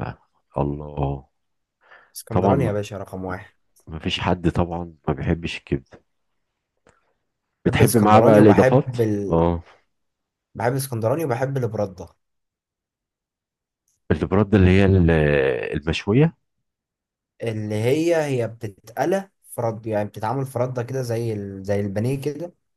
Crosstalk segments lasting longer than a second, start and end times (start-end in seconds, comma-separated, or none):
7.7-9.4